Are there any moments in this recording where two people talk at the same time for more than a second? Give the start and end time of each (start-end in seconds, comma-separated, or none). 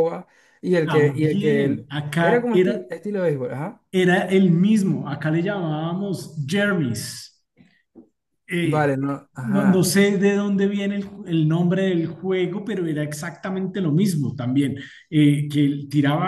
0.8-2.7